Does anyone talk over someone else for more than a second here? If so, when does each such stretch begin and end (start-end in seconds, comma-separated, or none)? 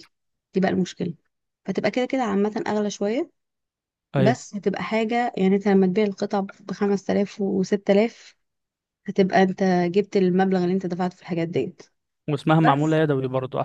none